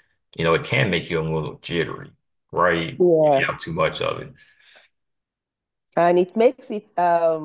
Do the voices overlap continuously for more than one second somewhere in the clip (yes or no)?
no